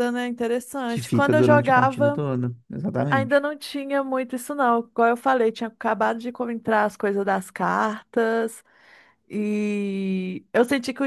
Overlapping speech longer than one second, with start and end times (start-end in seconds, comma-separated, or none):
0.9-2.2